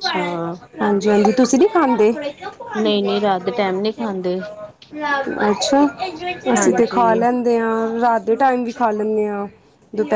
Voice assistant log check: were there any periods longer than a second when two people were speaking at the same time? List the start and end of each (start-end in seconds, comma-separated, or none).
none